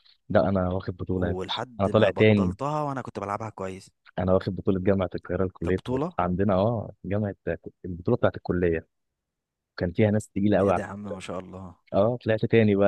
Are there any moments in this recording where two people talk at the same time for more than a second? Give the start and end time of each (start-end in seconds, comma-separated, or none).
1.2-2.5